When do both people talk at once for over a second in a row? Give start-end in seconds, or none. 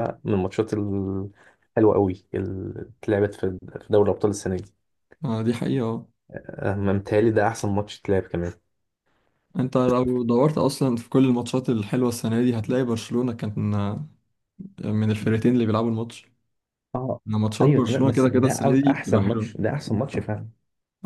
17.6-19.6